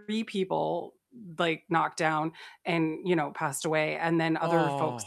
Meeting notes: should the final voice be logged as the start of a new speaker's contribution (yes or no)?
no